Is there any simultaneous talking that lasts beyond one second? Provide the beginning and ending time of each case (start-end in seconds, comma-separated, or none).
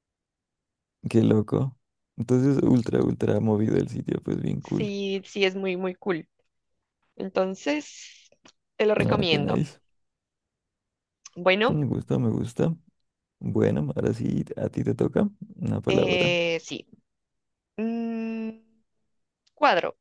none